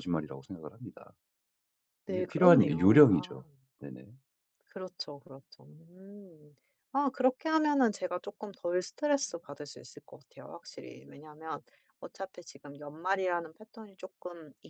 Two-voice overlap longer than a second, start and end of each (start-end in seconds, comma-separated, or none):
2.1-3.4